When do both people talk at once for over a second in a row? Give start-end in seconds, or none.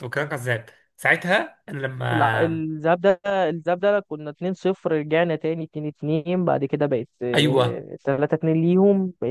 none